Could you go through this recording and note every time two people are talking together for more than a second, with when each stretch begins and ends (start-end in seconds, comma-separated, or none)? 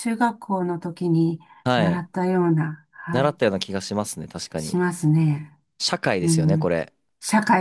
none